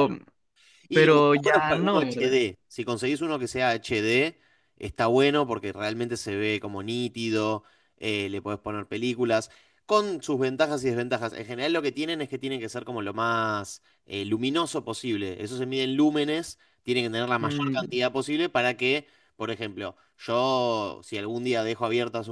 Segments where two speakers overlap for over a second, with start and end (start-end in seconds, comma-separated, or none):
0.9-2.4